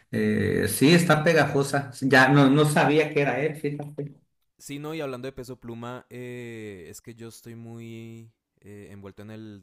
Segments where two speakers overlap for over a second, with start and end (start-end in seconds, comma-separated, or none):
none